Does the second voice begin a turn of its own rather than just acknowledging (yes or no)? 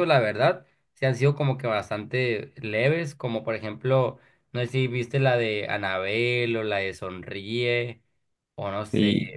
yes